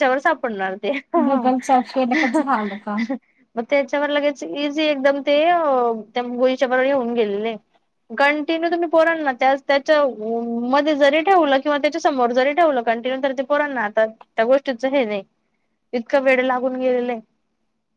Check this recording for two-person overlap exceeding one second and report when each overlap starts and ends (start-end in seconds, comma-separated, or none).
none